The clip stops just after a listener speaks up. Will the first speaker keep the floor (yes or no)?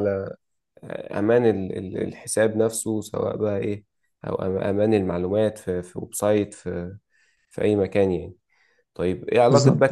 yes